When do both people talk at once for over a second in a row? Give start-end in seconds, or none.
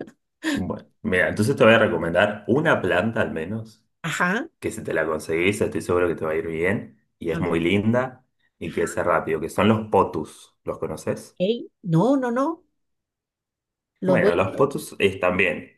none